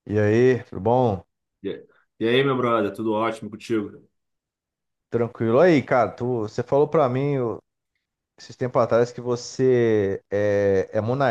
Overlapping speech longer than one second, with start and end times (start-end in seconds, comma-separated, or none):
none